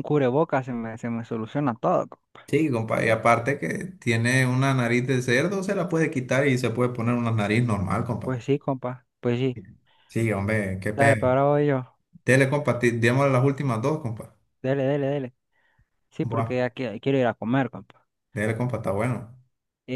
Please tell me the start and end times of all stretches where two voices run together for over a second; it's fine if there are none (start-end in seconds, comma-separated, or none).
none